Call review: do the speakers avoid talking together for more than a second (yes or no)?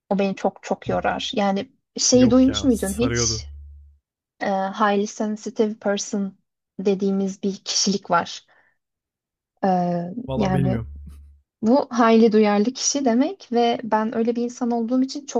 no